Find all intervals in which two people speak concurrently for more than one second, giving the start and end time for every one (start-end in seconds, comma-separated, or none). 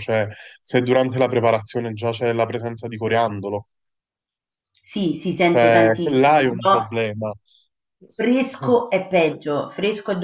5.5-6.8